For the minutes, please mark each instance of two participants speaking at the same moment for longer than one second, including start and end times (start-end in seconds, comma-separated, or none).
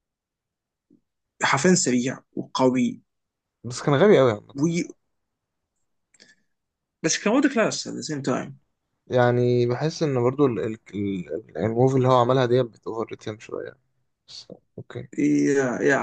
none